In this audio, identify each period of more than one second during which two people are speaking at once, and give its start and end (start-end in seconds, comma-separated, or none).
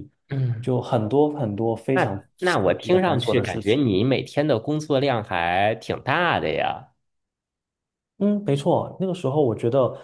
1.9-3.8